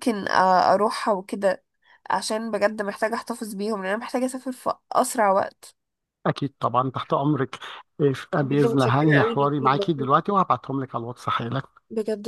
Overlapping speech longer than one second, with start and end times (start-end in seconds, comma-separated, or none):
8.4-9.9